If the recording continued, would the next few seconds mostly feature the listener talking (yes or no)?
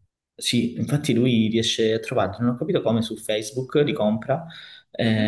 no